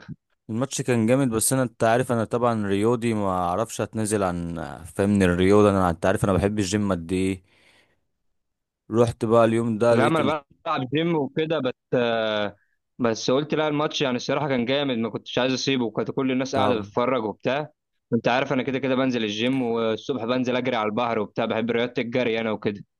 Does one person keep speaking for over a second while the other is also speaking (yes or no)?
no